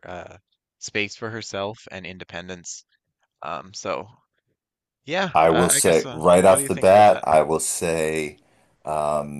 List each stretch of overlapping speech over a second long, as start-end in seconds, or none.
5.3-7.2